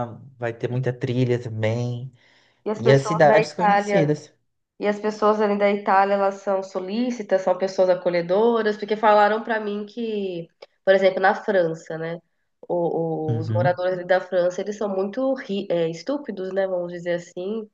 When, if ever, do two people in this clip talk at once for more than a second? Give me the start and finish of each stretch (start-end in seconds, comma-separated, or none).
2.8-4.1